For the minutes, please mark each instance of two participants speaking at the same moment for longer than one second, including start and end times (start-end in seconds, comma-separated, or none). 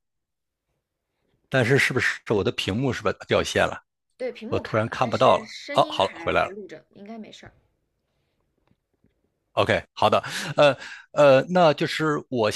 4.5-6.6